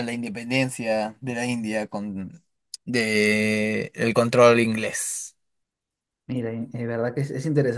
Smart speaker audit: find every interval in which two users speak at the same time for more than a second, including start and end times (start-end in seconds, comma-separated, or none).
none